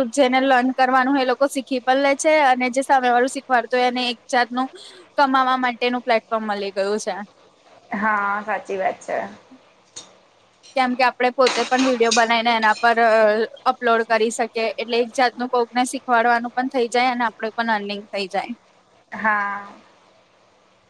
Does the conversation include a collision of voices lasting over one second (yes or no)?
no